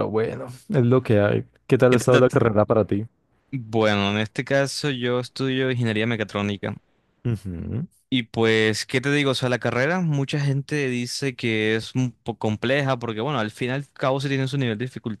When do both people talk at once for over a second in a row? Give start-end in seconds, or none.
none